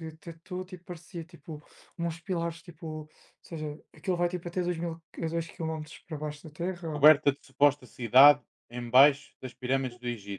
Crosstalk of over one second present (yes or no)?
no